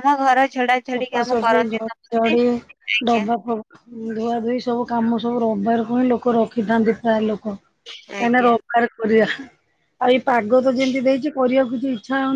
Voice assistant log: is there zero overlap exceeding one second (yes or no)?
no